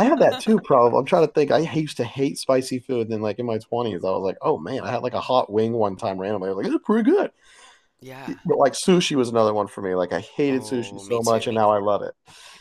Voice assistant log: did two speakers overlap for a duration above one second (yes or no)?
yes